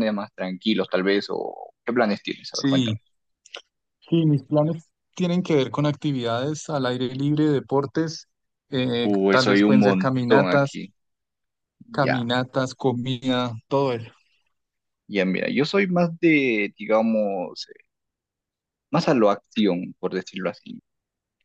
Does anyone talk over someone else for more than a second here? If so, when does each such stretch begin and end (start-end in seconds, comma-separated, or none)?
9.0-10.8